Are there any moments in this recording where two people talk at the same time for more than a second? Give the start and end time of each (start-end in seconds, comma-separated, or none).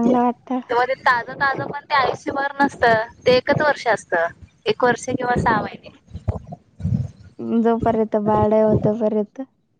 none